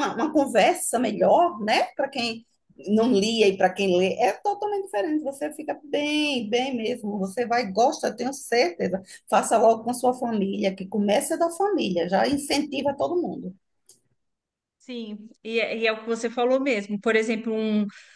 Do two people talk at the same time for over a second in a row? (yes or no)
no